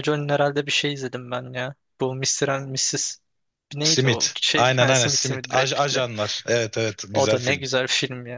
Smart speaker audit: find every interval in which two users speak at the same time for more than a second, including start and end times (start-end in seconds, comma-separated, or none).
3.8-6.1